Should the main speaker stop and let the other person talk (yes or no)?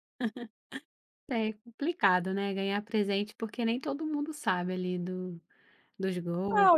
yes